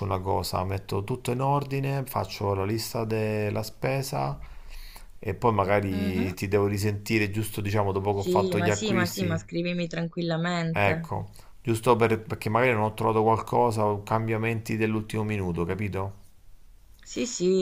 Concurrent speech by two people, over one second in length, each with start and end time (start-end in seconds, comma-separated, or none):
8.1-9.4